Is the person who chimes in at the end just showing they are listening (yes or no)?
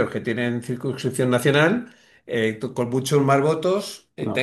yes